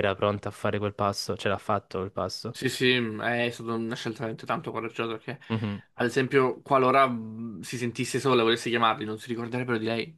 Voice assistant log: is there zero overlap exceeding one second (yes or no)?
yes